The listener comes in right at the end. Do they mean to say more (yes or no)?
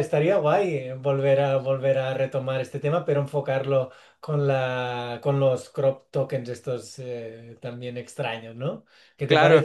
no